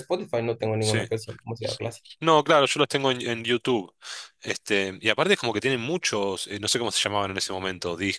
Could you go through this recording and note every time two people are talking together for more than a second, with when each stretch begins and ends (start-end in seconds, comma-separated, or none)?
none